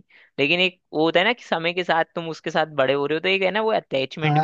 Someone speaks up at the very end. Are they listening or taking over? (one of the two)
taking over